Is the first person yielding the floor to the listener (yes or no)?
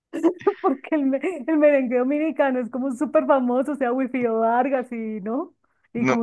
yes